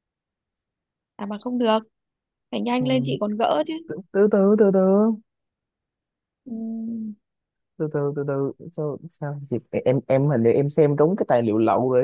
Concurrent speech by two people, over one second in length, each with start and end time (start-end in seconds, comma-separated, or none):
none